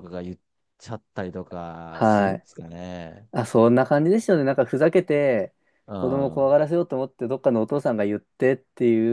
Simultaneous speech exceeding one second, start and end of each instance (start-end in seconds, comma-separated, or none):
none